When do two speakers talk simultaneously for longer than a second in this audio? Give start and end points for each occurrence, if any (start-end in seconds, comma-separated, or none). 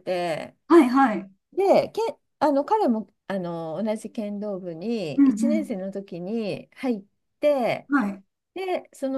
none